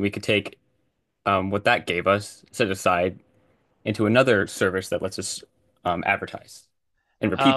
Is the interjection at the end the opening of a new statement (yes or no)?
yes